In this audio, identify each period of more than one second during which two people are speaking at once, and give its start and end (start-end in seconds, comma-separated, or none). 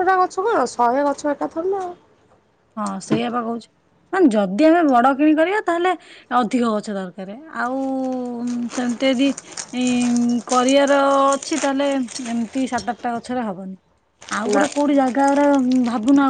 none